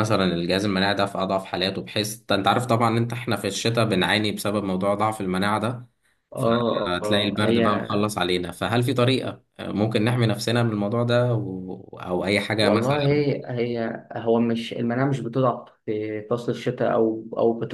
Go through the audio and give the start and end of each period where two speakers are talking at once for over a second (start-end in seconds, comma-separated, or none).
6.4-7.9